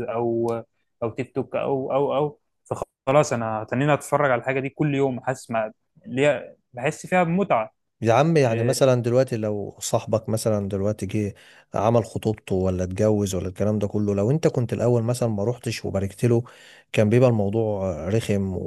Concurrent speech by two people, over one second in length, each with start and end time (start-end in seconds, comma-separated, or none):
none